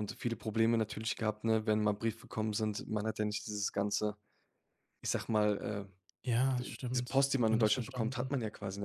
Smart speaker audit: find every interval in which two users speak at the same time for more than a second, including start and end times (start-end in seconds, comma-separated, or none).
6.6-8.3